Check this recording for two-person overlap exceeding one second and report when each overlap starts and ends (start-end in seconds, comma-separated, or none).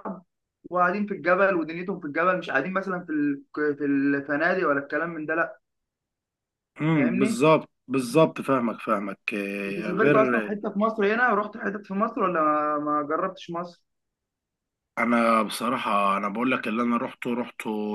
none